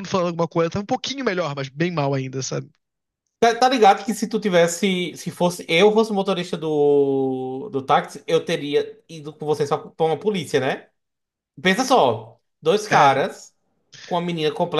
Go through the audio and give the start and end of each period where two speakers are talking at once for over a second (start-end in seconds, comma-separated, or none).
none